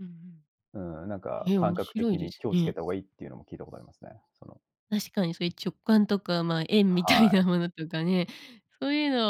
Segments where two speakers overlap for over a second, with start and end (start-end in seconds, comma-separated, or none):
1.5-2.8